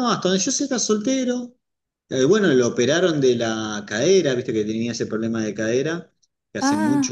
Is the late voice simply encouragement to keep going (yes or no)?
yes